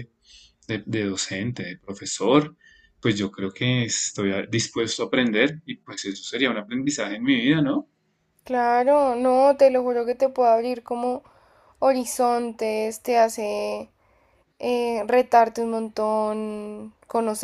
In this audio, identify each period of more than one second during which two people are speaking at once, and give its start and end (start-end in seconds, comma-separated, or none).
none